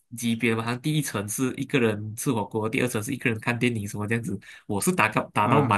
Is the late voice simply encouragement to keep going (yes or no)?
yes